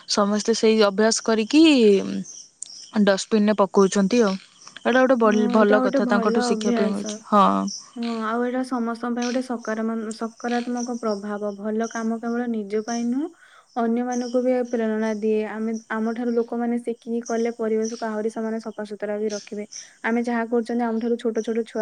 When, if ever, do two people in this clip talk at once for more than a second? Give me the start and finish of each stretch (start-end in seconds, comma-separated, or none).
5.2-7.1